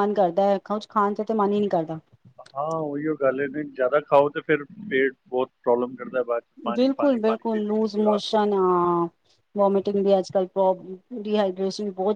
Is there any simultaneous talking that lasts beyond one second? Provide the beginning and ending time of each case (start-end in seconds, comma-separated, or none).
6.8-8.7